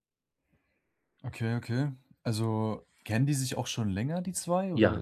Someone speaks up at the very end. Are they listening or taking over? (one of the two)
taking over